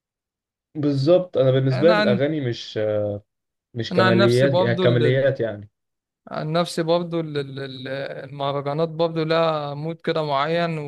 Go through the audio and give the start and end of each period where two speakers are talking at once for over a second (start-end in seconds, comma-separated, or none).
3.9-5.3